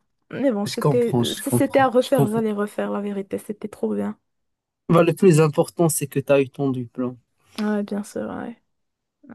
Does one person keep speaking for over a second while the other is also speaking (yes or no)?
yes